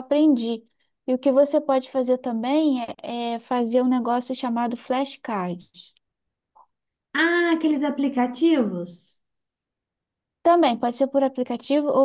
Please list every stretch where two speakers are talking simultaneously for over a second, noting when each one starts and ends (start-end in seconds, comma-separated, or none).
none